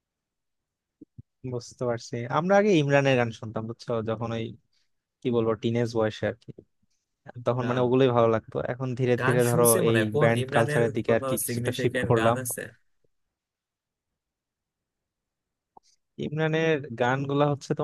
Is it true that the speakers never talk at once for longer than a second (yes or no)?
no